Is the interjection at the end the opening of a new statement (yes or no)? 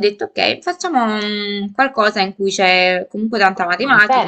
yes